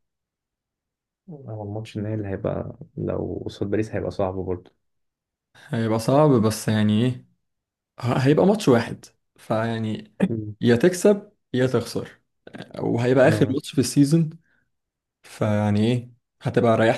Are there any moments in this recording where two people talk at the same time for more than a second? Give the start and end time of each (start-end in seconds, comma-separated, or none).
none